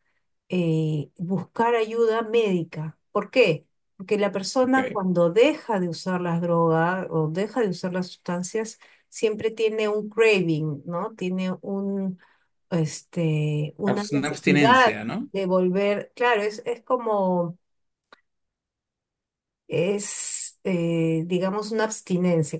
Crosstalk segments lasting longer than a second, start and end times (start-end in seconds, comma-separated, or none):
13.8-15.3